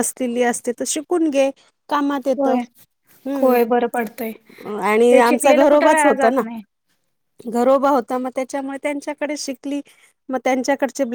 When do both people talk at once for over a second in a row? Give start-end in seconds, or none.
5.1-6.4